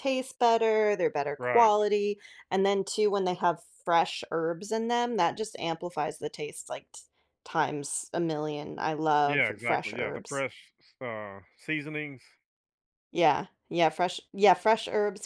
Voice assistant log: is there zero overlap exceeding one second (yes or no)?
no